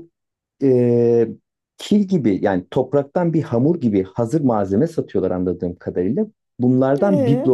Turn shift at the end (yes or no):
no